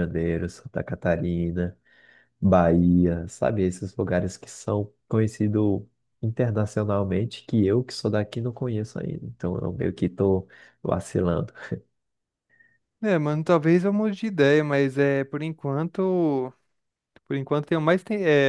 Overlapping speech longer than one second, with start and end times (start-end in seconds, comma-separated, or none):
none